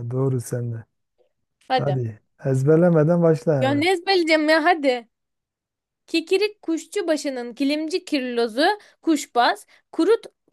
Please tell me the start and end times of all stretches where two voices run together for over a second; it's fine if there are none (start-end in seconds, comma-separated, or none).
none